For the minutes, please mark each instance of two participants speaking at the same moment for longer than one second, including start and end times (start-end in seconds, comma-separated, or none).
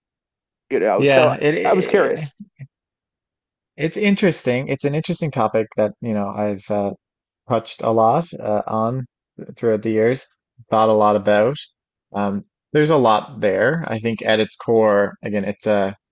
1.0-2.3